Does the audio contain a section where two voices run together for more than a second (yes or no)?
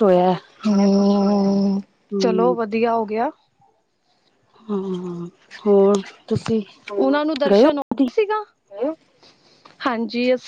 no